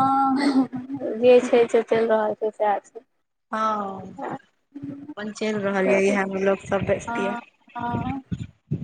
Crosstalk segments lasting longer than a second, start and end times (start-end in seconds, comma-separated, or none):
none